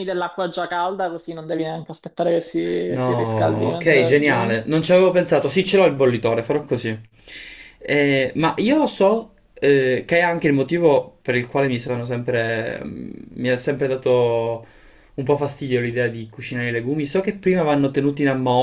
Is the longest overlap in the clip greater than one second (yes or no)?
yes